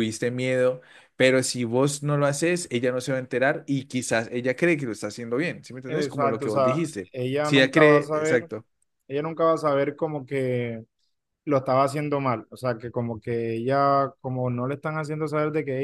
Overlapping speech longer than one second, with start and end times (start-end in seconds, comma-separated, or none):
5.9-8.5